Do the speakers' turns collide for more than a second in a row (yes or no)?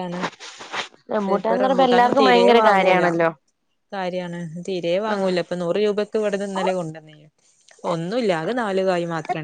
yes